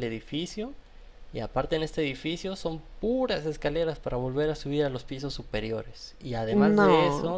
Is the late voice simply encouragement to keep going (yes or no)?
yes